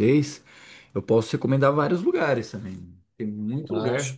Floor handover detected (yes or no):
no